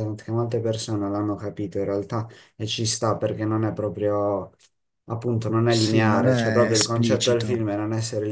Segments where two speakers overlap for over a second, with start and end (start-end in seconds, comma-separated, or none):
5.7-7.7